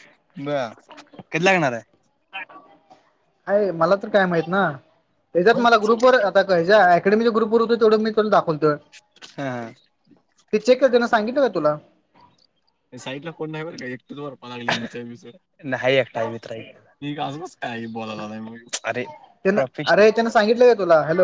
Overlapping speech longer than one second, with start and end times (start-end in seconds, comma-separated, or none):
none